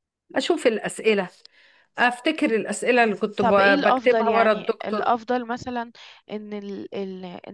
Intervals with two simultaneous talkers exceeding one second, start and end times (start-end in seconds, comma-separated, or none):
3.4-5.2